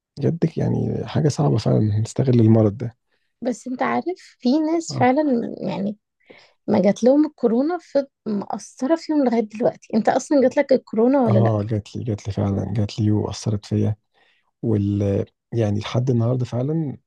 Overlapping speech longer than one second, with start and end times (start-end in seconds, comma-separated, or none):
none